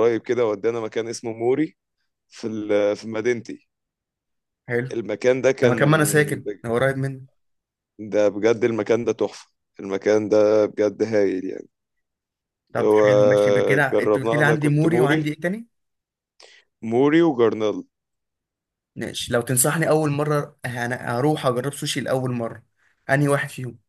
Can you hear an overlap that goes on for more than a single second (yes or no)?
yes